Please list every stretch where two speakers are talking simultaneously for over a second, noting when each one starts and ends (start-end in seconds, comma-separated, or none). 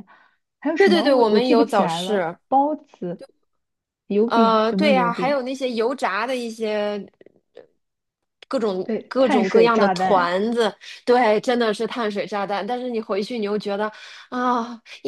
0.8-2.4, 4.2-5.5, 8.8-10.3